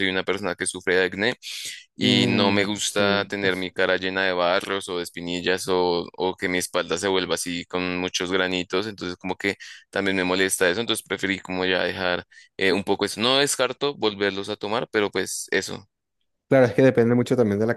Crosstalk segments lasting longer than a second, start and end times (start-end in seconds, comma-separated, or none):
2.0-3.3